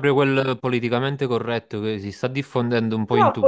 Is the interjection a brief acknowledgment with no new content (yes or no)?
no